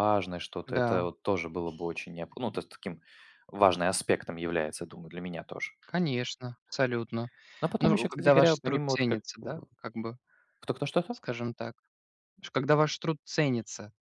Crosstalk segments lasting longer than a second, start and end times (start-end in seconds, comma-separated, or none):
7.8-9.5